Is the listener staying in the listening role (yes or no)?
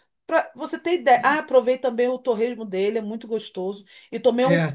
yes